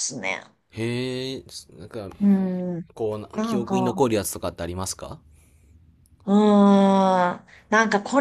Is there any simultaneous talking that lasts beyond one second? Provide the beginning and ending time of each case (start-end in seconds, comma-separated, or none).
none